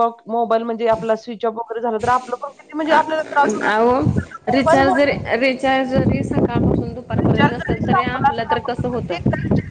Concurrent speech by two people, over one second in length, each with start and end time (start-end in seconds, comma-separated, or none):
7.4-9.1